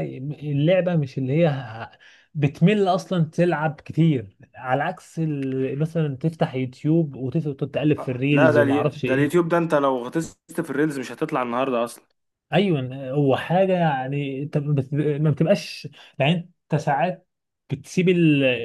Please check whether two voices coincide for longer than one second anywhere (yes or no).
yes